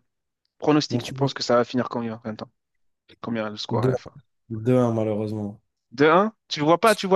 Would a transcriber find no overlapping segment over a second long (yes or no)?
yes